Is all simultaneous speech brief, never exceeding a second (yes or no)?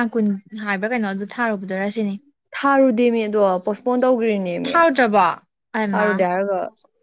yes